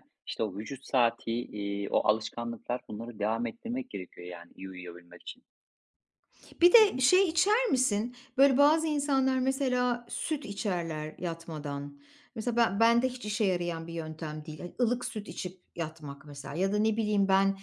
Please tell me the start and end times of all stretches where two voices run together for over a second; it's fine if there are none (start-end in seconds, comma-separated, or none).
none